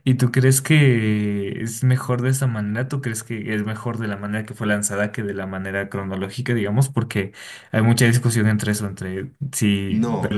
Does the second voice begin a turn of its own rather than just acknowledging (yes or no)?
yes